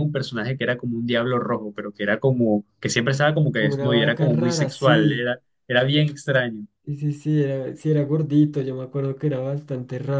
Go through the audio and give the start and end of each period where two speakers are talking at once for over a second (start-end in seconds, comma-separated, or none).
3.5-5.3